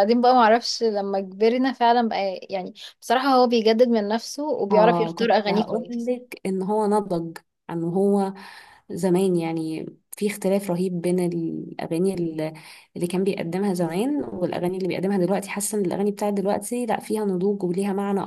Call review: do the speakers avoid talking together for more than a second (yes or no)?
no